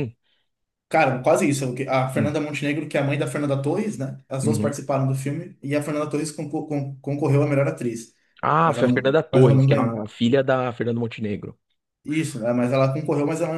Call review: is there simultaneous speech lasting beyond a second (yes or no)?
yes